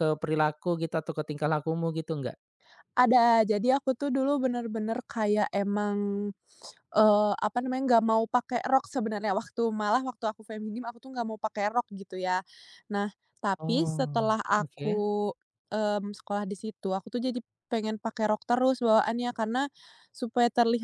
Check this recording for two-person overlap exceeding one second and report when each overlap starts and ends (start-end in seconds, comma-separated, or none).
13.6-15.0